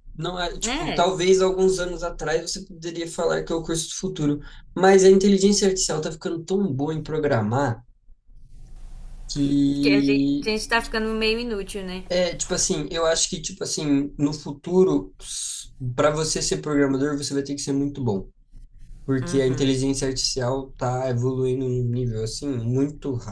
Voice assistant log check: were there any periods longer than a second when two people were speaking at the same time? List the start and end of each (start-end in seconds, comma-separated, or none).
none